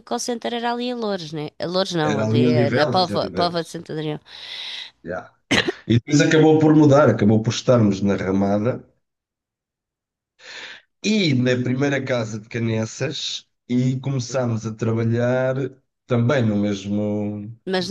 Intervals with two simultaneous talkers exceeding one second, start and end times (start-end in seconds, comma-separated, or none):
2.0-3.8